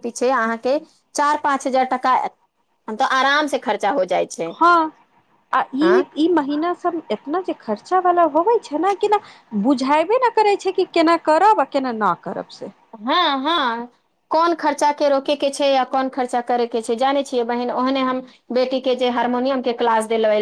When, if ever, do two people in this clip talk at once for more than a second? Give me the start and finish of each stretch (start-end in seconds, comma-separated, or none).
none